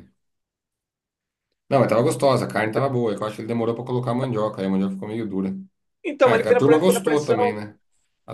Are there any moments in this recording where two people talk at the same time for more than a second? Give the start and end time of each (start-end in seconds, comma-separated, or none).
6.2-7.6